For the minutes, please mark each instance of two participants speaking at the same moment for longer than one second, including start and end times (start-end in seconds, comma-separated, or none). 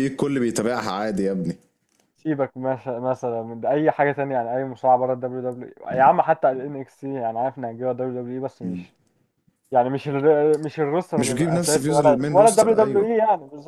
11.2-13.1